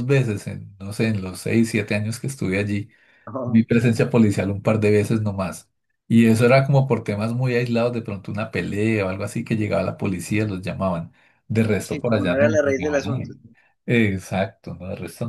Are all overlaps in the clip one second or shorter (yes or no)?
no